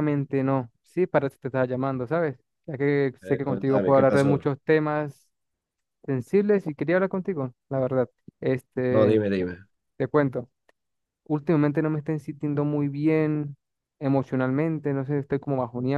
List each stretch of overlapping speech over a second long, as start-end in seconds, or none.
3.2-4.4